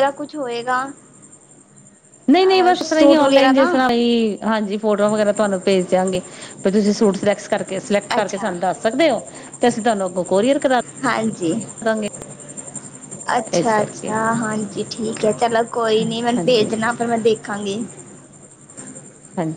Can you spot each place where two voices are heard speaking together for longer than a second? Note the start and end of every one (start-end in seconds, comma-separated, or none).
2.5-3.7